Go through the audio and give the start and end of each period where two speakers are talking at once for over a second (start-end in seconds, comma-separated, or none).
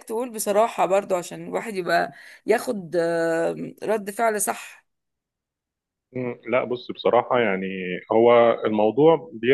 none